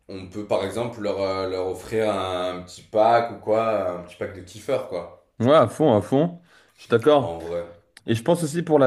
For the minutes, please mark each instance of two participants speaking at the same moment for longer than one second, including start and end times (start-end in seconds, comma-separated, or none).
none